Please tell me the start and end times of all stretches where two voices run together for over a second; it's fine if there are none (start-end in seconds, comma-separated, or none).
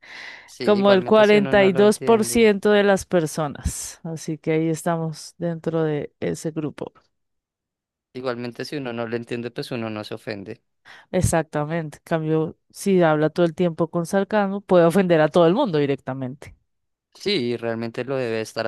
0.6-2.5